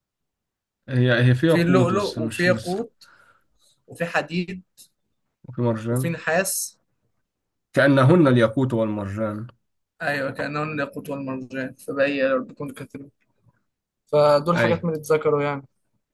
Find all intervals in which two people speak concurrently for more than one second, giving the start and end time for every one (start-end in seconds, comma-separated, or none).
1.5-2.8